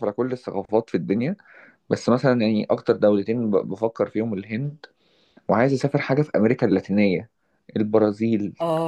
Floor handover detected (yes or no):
no